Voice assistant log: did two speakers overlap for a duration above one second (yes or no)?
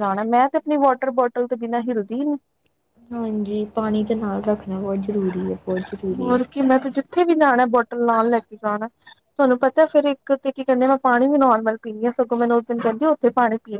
no